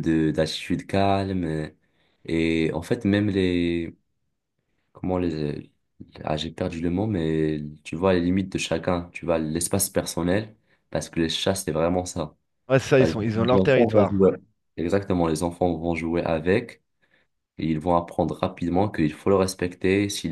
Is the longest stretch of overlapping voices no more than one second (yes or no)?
no